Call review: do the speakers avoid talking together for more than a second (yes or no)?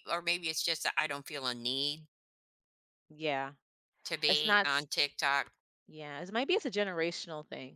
yes